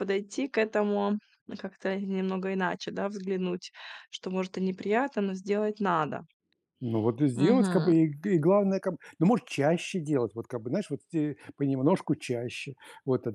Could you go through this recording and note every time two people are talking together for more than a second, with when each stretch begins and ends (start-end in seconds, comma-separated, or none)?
none